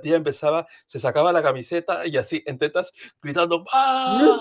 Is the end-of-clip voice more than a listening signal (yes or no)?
no